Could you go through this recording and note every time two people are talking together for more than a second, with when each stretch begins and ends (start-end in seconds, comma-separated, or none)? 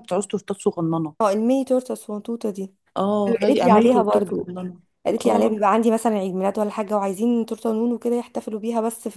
3.3-4.5